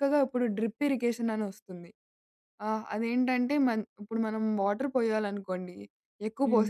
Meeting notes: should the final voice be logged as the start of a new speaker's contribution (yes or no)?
no